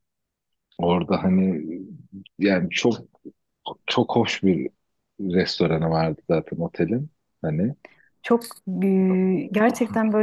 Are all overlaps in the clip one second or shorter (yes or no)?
yes